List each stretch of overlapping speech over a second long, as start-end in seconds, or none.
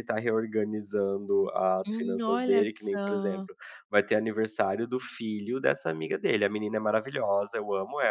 1.9-3.5